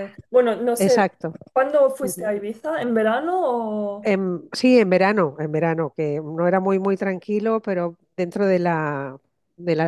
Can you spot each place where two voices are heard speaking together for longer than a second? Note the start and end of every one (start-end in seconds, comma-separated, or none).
none